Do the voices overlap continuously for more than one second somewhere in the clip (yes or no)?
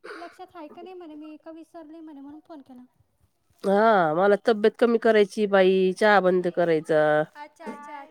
no